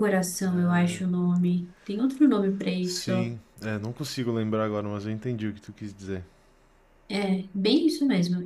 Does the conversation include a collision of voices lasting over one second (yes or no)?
no